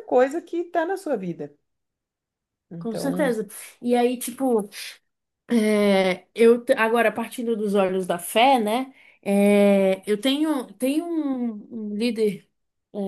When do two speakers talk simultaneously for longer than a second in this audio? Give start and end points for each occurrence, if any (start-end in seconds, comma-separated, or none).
none